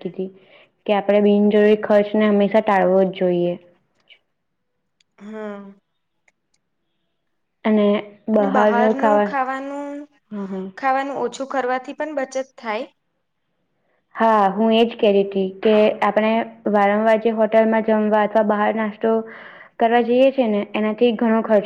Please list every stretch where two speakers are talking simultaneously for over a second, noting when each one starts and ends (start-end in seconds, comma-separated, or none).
8.4-10.0